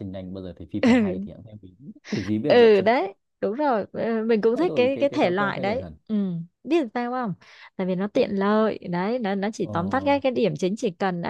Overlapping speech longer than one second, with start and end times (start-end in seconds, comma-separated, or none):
4.5-5.9